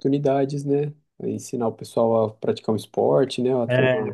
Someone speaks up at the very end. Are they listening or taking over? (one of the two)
taking over